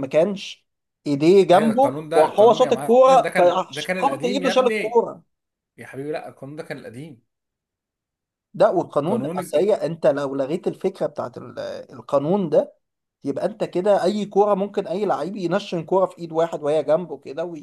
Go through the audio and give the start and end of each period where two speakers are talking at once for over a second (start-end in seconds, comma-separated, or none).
1.5-5.1